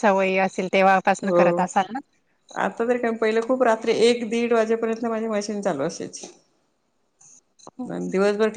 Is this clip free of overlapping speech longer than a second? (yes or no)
yes